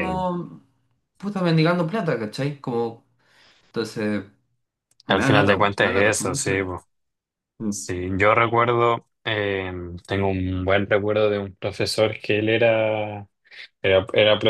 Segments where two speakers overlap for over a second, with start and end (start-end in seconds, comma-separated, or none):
5.1-6.7